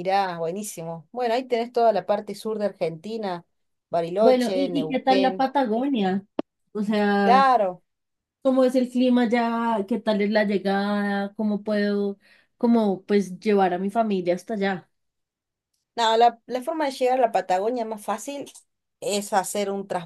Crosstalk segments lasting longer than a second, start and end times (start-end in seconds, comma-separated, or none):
4.2-5.5